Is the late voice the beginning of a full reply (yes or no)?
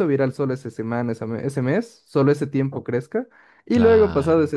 no